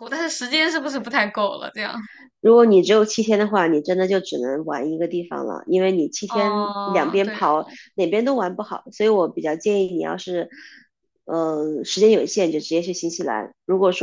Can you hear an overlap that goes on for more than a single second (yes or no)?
yes